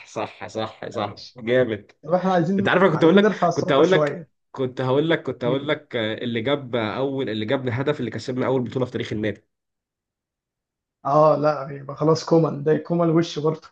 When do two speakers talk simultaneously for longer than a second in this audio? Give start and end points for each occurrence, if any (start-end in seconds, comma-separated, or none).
2.6-4.3